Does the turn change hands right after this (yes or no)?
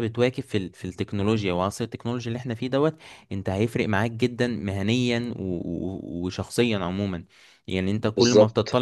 no